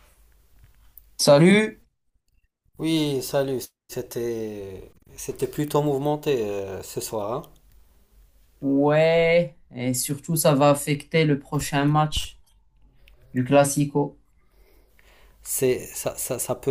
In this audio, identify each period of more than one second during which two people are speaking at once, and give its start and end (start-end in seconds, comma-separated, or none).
none